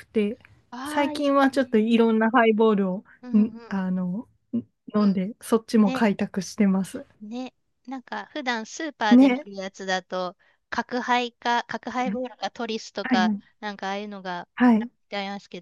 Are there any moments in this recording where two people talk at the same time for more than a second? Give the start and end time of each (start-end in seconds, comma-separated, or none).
0.8-2.0